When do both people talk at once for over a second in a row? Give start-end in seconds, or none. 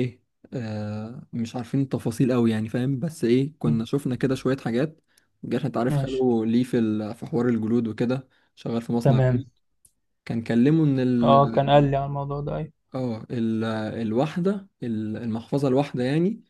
none